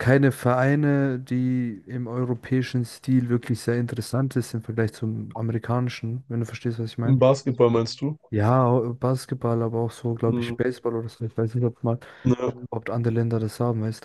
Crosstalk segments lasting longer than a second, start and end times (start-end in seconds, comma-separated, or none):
none